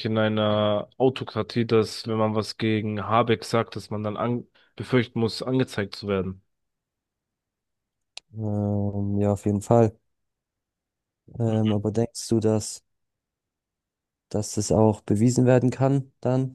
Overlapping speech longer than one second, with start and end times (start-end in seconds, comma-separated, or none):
none